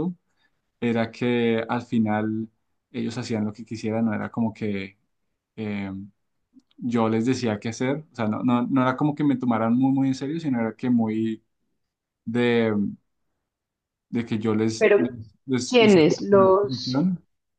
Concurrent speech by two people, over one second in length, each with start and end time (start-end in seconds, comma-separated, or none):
15.7-17.1